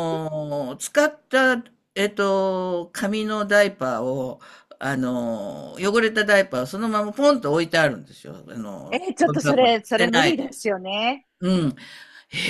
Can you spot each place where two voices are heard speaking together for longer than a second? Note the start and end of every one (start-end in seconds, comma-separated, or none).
8.9-10.5